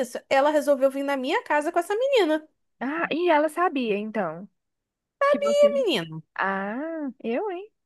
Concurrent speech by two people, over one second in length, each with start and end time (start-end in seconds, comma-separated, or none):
none